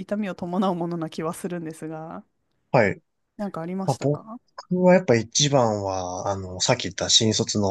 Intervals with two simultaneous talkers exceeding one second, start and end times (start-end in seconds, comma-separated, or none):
none